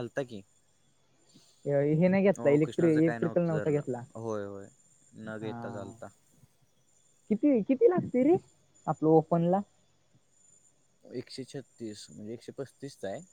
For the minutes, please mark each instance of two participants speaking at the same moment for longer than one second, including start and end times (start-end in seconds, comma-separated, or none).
2.4-3.8